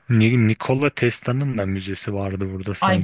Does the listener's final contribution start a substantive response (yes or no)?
yes